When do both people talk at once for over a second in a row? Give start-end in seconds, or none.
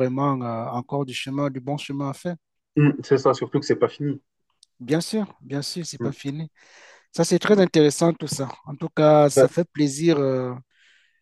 none